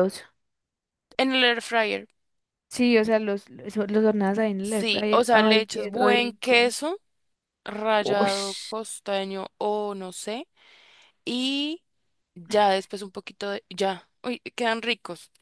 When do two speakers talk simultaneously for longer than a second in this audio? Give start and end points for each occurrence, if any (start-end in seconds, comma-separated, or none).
4.6-6.7